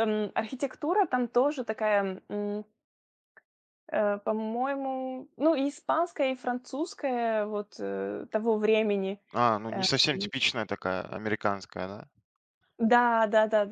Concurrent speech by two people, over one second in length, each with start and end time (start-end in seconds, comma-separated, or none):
none